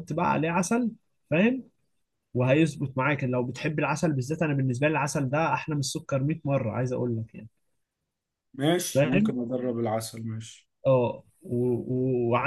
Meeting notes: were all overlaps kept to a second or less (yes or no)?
yes